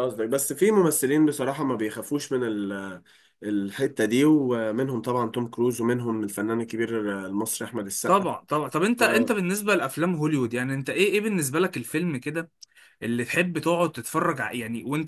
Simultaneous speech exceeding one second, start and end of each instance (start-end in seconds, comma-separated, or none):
none